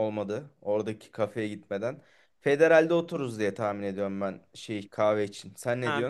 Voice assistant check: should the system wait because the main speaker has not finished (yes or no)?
no